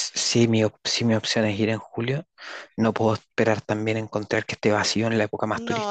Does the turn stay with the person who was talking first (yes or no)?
no